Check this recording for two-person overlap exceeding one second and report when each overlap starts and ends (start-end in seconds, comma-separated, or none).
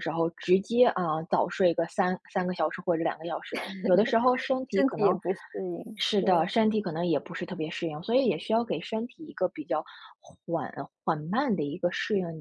none